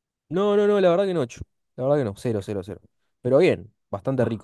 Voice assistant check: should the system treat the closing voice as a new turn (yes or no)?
yes